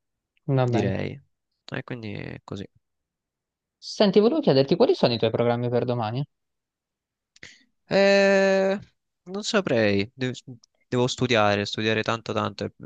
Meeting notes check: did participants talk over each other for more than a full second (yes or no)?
no